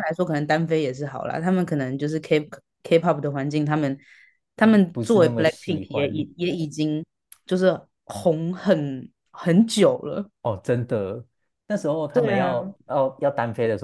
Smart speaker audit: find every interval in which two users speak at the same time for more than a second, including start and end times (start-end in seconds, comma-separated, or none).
4.6-6.2